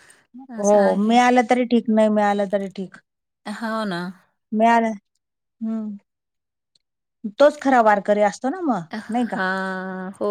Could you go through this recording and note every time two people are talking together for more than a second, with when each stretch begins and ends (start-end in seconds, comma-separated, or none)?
none